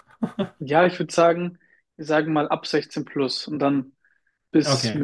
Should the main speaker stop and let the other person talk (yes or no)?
no